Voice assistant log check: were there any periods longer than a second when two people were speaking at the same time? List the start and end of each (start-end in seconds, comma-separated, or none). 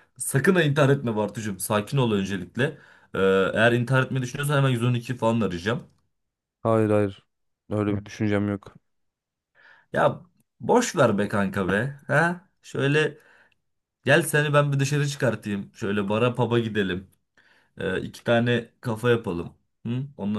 none